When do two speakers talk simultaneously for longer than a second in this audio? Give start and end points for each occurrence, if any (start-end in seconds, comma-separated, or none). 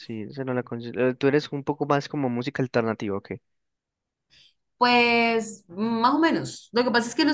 none